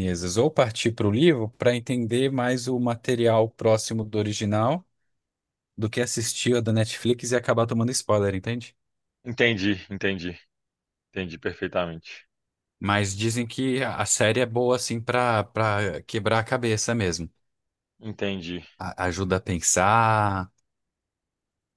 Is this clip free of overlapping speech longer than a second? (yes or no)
yes